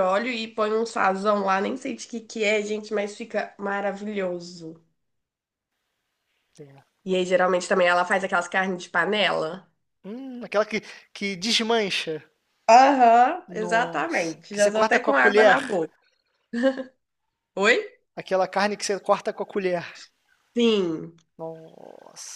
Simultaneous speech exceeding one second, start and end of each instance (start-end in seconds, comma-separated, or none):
13.5-15.8